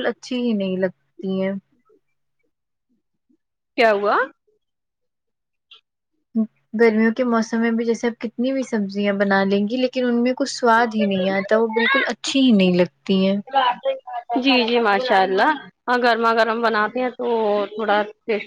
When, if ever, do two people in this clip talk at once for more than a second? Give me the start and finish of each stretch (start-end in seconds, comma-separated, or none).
none